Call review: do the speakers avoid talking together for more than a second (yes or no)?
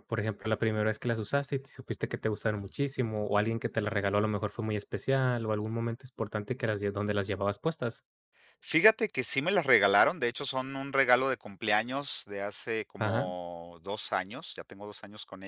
yes